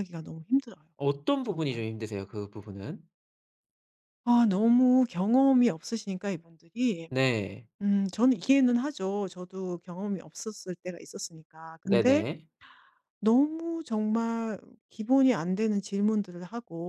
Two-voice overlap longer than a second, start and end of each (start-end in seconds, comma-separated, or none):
none